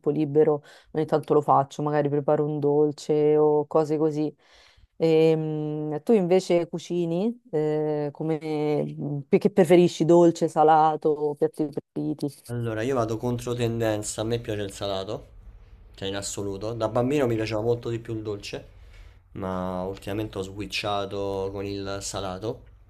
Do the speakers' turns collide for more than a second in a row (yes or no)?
no